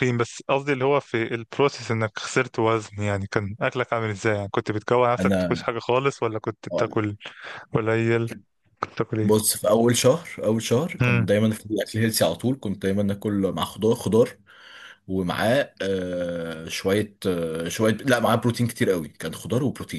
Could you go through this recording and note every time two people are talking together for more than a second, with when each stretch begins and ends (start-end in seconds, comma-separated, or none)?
none